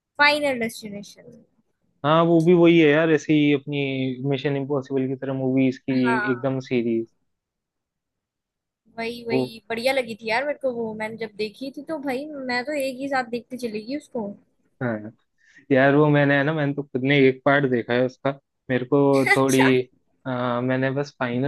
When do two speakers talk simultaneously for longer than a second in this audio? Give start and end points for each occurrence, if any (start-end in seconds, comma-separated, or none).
none